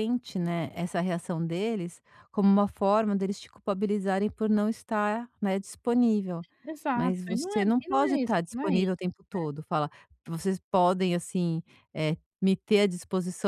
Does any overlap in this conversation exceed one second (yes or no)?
yes